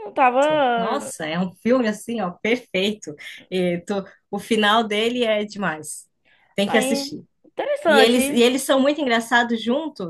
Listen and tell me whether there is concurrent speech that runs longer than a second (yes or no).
no